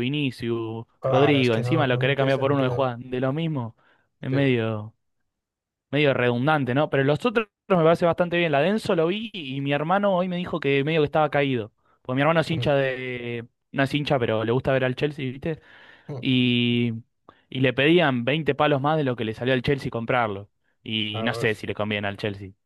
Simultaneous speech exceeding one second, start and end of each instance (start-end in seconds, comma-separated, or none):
1.0-2.9